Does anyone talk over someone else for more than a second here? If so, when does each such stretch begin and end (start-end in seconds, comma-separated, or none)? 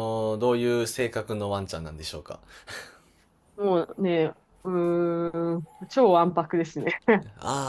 none